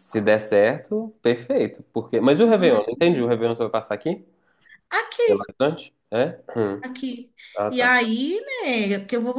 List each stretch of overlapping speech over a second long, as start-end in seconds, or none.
none